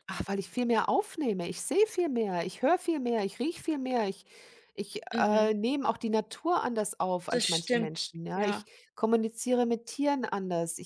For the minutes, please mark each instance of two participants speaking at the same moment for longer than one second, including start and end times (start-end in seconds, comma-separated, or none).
7.3-8.7